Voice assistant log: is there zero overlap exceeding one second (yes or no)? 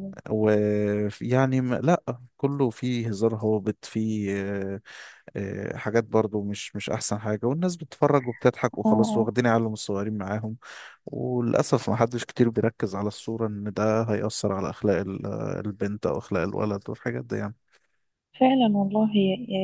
yes